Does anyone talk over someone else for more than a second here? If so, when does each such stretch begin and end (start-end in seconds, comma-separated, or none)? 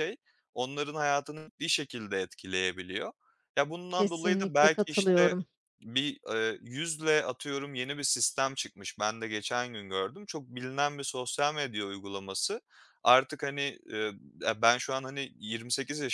3.9-5.3